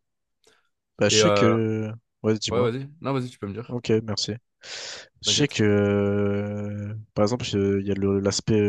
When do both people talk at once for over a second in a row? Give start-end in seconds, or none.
none